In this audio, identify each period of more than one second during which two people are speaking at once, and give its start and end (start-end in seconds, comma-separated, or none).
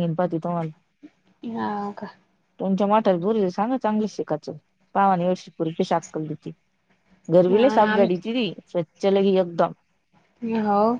none